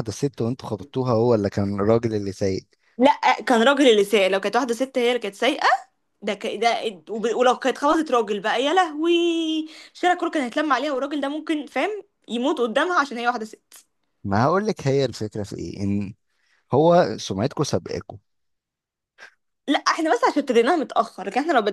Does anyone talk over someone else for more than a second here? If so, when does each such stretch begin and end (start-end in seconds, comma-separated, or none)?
none